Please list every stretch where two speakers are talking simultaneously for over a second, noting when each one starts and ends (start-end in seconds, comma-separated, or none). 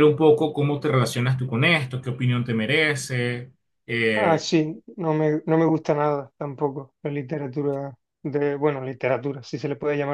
none